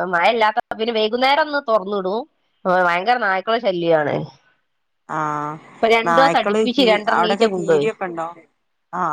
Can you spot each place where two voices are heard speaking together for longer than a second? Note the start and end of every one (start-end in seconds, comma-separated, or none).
6.1-7.9